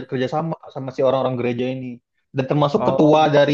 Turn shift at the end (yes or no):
no